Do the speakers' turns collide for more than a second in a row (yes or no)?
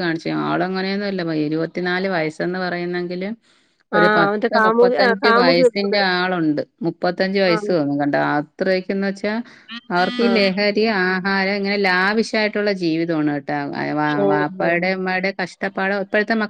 yes